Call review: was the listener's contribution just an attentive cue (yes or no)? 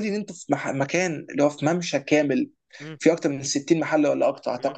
yes